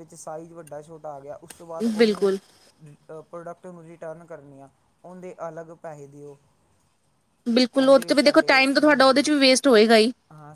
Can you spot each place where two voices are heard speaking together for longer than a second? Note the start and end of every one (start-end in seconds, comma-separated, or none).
7.8-9.2